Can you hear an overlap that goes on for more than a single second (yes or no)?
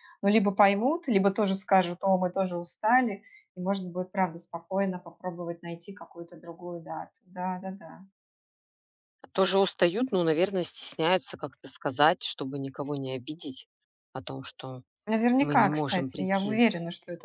yes